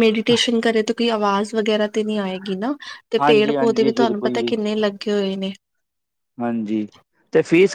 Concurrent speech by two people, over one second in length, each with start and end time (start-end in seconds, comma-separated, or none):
3.2-4.5